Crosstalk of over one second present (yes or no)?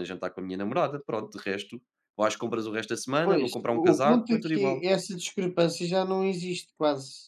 yes